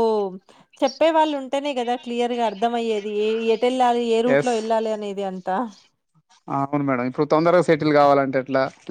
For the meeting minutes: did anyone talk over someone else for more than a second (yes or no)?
no